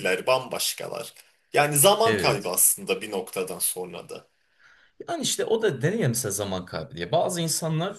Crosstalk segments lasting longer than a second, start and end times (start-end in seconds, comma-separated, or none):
none